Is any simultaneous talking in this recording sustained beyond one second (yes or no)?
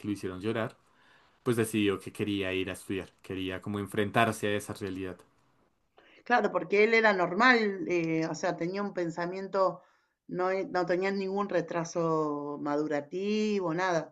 no